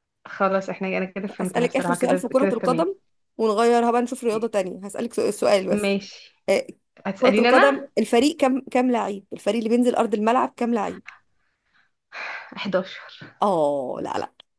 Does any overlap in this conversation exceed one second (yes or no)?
yes